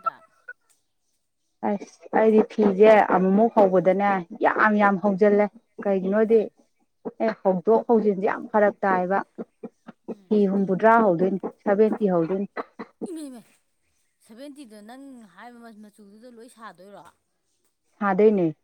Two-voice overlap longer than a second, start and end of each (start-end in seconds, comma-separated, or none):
none